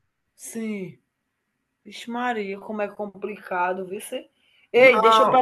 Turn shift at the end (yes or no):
no